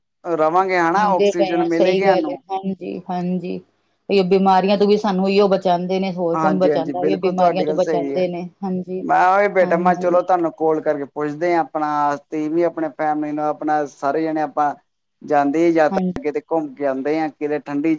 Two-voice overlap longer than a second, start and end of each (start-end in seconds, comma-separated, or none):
0.9-2.4, 6.3-8.2